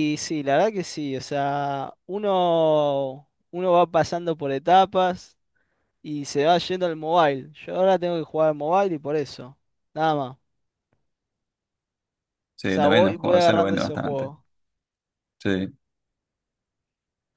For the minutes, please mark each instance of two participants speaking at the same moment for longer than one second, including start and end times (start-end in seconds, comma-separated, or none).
12.7-14.3